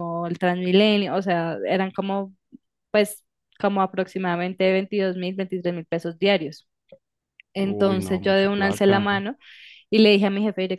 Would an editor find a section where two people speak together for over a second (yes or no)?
yes